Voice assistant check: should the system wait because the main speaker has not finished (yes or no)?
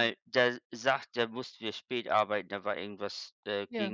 yes